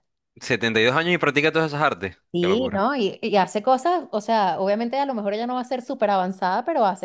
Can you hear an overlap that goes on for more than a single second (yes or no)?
no